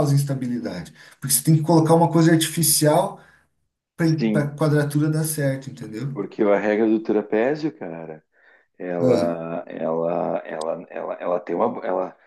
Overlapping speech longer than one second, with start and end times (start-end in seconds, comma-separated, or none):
none